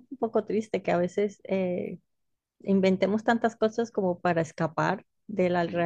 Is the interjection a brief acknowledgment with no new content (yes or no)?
yes